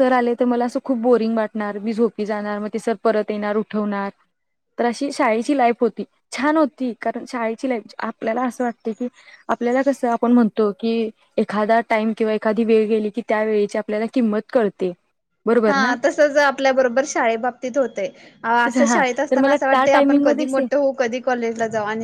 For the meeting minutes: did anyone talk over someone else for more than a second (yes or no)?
yes